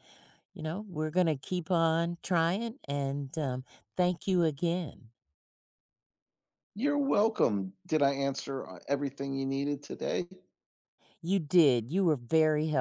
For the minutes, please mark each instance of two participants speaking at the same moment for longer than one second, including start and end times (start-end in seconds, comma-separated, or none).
none